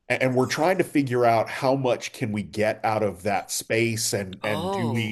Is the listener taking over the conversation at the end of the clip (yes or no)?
no